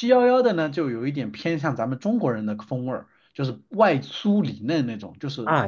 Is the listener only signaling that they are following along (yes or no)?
no